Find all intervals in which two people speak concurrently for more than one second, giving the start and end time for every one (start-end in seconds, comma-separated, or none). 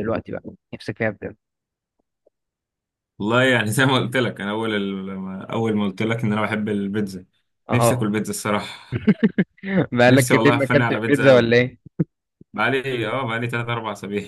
10.1-11.5